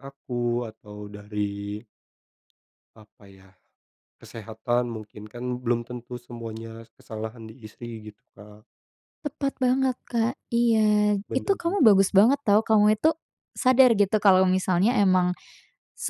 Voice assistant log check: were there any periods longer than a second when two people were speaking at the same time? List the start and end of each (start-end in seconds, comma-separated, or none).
none